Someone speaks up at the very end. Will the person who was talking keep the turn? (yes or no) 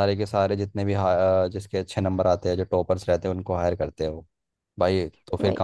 yes